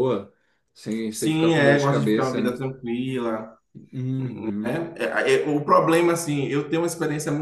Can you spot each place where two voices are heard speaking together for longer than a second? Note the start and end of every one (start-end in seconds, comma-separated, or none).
1.1-2.6